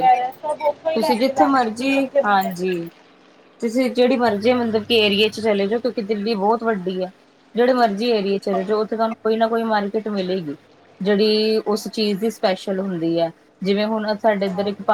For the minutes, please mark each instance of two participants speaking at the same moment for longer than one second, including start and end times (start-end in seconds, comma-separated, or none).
0.9-2.5